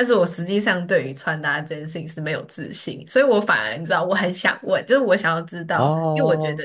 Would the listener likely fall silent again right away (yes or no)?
yes